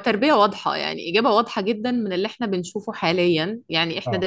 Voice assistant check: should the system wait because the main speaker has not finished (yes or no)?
yes